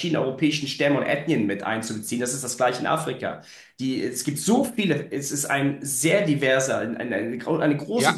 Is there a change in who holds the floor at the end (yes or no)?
yes